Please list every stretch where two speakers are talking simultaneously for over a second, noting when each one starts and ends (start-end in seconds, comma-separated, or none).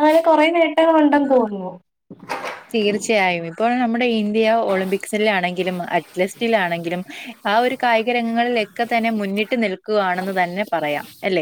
none